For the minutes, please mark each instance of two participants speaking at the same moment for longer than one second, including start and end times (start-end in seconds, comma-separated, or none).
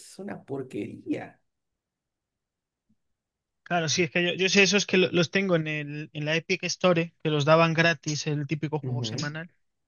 none